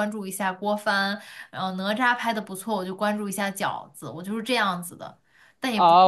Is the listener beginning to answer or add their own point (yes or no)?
yes